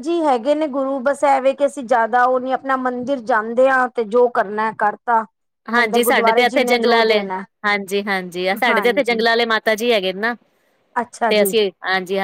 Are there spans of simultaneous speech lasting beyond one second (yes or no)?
yes